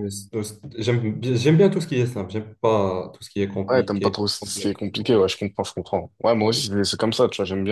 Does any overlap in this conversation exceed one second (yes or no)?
yes